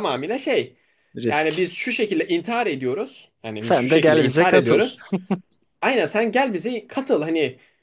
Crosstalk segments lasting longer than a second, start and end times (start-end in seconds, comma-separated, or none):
3.6-4.8